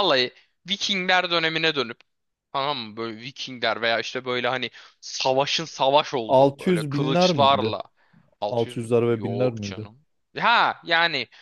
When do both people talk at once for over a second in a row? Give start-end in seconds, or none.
6.3-7.7, 8.5-9.9